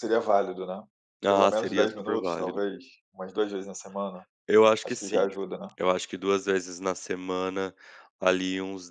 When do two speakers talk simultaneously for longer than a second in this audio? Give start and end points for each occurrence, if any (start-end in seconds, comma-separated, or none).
1.3-2.6